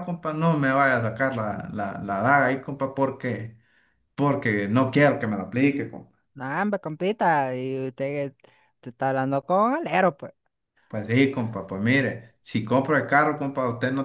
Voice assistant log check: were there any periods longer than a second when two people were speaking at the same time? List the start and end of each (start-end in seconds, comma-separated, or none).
none